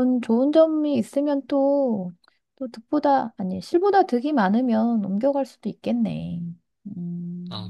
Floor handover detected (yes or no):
yes